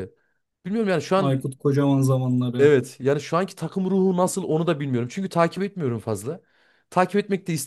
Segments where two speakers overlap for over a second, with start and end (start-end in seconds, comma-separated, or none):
none